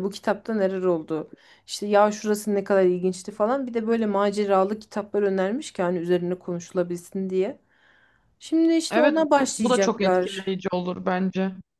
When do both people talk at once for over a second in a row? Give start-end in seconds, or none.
8.9-10.5